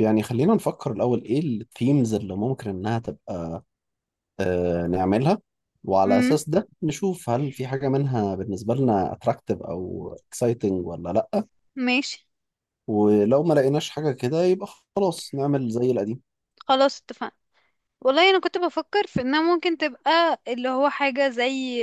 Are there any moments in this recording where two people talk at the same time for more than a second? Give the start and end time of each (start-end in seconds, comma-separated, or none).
none